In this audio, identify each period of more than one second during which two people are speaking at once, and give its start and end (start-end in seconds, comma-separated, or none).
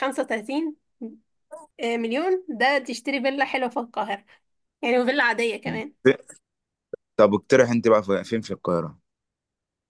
none